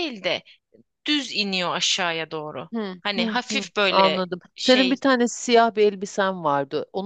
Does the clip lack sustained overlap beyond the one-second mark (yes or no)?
no